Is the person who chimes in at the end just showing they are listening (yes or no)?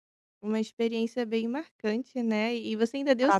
yes